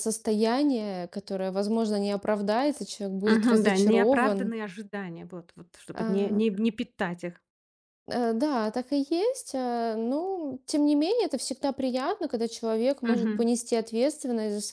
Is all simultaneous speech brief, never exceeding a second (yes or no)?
no